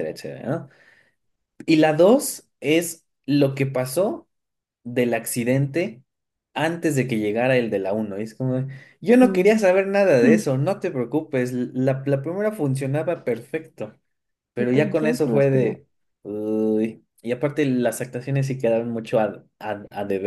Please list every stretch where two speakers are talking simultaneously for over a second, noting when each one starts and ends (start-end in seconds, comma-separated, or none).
14.6-15.8